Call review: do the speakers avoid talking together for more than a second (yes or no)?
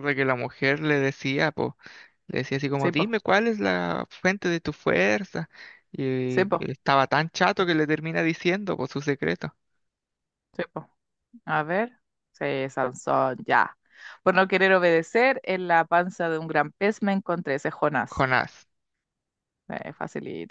yes